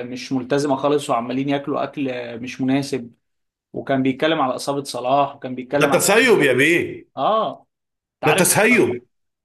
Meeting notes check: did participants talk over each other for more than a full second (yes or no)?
no